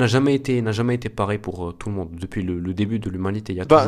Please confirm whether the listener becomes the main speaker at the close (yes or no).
yes